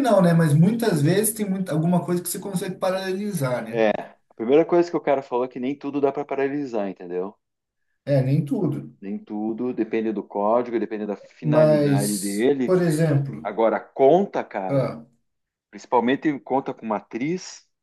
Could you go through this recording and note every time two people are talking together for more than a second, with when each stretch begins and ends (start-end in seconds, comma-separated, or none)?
11.4-12.8